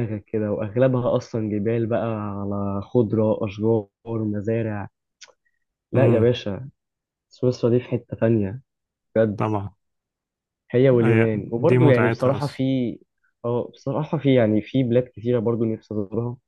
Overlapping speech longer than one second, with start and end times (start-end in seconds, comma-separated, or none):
11.0-12.6